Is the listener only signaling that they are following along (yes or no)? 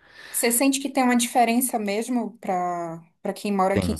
yes